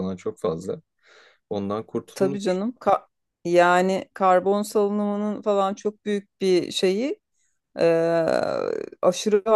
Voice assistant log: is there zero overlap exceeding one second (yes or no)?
yes